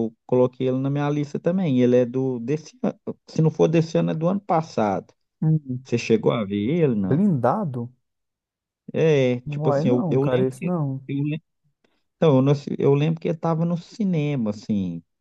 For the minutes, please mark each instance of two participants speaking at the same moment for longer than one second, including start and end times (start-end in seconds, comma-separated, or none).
9.5-11.1